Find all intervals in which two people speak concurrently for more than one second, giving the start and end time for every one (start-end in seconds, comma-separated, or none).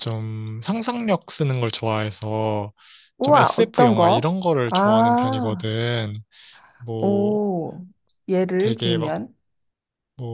3.2-5.7